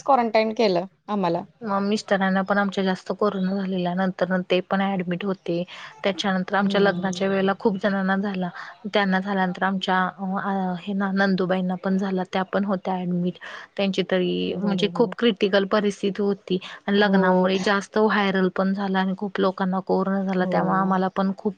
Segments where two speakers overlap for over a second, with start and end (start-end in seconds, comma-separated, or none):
none